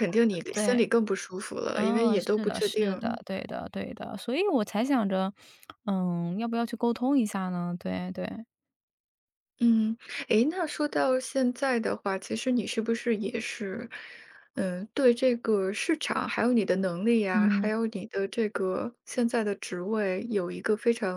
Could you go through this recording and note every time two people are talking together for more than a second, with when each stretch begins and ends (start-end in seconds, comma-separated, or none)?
1.7-3.2